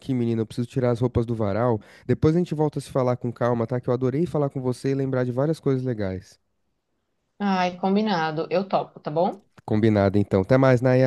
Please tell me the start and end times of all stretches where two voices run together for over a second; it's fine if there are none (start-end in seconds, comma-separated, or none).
none